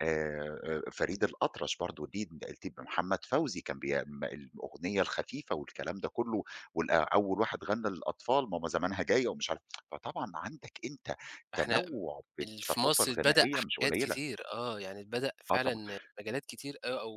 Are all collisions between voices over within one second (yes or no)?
no